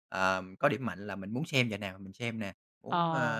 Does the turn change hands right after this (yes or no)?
no